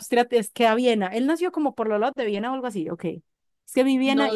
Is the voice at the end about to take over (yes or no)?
yes